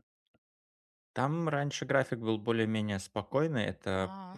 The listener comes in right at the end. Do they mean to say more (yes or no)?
no